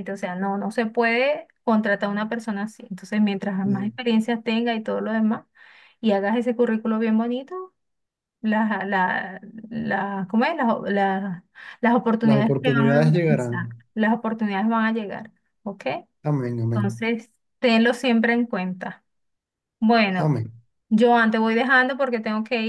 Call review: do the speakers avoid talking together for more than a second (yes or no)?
no